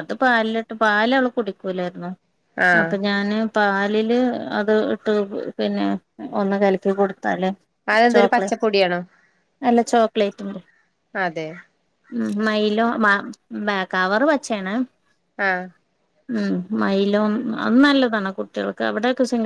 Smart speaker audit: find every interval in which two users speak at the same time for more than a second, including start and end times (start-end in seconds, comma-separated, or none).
none